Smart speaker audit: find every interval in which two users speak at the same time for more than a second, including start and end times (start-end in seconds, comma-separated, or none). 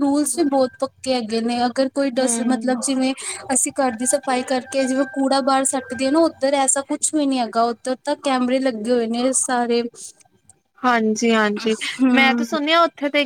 none